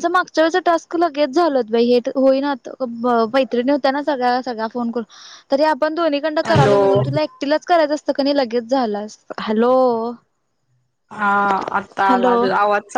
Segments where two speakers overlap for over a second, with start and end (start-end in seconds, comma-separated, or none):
none